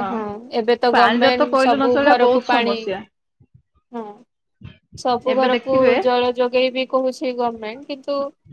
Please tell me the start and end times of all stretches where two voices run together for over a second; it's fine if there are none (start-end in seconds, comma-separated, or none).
0.9-2.8